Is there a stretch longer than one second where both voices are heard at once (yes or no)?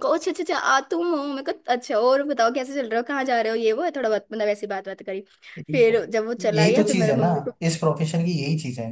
yes